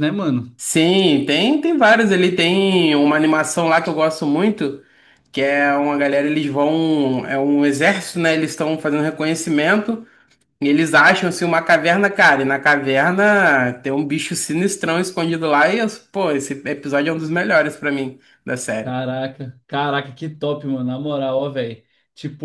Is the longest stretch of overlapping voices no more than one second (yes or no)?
yes